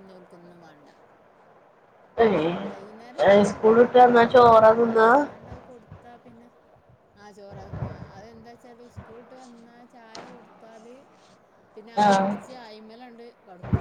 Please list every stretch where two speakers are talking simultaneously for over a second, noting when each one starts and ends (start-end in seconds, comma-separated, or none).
3.3-5.1